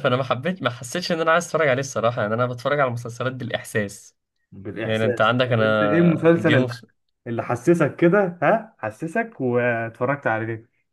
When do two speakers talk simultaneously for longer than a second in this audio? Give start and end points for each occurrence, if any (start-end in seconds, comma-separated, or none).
4.8-6.7